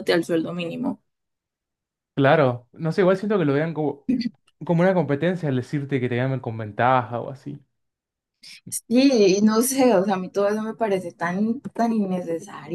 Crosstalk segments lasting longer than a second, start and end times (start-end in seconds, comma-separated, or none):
none